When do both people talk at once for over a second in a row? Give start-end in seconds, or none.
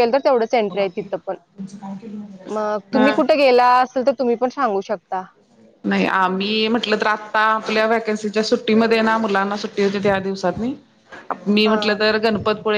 none